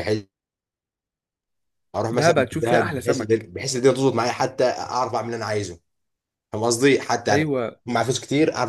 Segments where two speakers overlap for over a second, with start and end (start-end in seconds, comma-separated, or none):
2.1-3.5